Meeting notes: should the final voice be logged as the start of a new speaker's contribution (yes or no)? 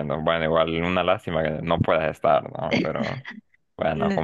no